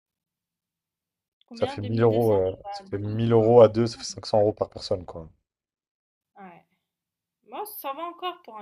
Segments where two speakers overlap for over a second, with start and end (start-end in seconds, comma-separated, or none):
1.6-3.5